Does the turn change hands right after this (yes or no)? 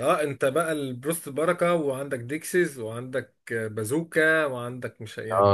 yes